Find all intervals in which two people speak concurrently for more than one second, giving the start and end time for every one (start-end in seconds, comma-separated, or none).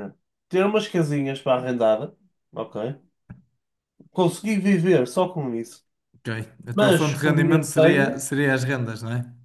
6.7-8.2